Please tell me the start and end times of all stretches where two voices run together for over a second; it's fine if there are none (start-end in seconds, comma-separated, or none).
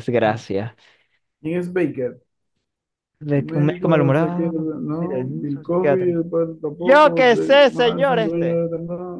3.3-6.1, 6.8-8.7